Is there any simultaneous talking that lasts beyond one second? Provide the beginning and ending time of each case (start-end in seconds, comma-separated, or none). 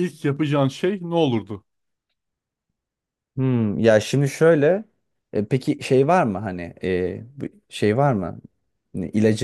none